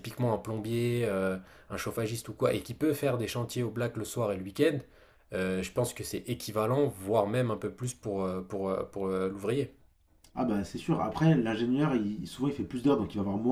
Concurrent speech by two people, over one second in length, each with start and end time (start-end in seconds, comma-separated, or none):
none